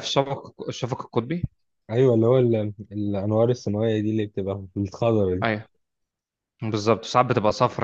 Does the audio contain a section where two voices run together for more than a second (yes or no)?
no